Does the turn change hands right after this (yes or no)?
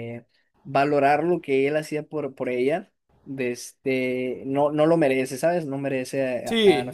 yes